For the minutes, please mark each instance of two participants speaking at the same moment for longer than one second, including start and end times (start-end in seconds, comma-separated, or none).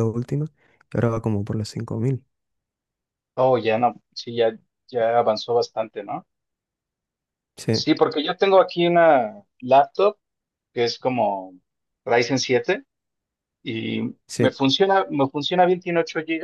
none